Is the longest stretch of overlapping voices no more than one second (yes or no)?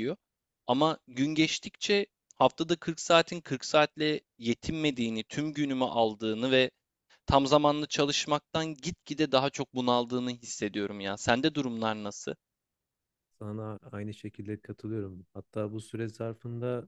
yes